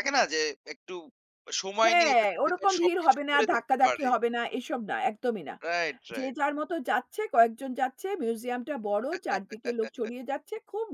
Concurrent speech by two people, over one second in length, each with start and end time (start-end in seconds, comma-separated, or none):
1.8-4.1